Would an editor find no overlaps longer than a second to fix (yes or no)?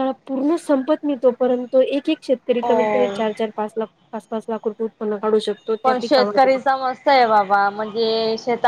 yes